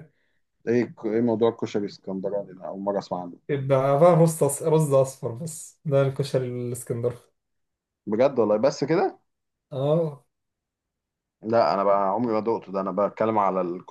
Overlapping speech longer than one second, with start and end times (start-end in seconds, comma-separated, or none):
none